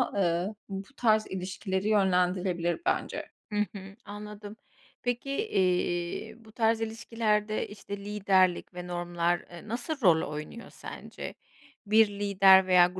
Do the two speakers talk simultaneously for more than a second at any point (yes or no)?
no